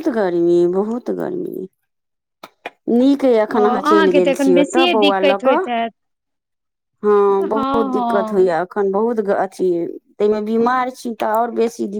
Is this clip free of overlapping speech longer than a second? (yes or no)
no